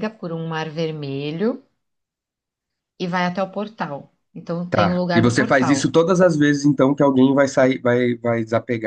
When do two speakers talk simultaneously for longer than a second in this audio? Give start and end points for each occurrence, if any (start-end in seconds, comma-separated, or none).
4.7-5.9